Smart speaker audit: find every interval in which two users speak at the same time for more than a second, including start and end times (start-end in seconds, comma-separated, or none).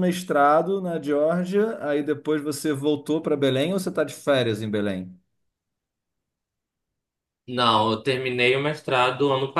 none